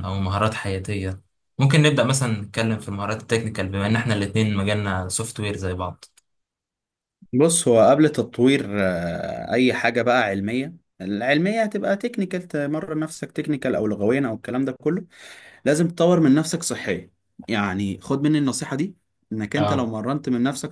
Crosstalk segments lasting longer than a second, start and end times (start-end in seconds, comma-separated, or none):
none